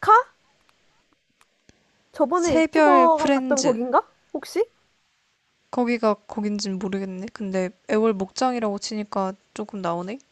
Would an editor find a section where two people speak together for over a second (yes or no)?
yes